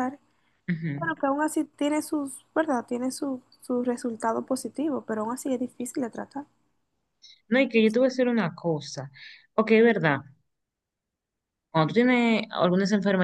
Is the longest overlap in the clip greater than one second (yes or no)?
no